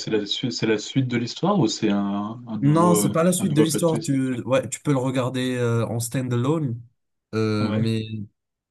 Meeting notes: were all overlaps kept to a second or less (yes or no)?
no